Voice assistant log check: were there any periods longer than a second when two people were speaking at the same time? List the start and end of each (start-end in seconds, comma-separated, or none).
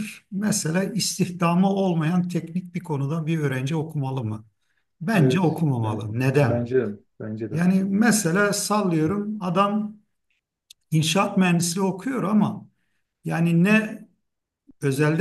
5.1-6.7